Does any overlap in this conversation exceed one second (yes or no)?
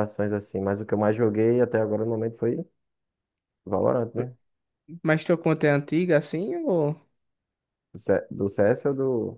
no